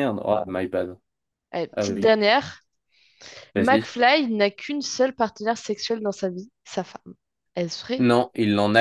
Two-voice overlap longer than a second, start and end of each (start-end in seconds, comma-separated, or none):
none